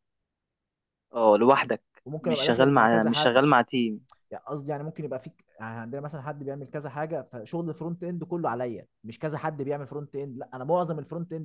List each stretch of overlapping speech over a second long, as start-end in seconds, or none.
2.2-3.4